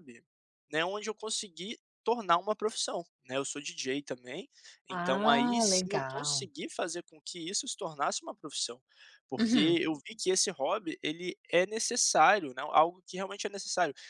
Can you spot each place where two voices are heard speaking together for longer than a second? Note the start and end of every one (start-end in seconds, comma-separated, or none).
4.9-6.5